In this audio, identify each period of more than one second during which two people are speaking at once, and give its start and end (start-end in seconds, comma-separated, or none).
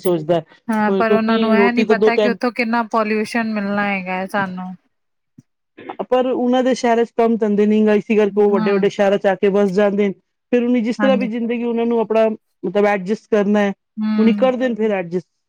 0.8-2.4